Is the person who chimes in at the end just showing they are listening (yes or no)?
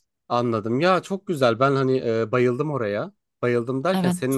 yes